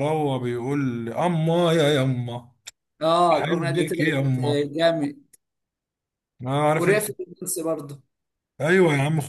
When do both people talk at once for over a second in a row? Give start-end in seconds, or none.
3.3-4.7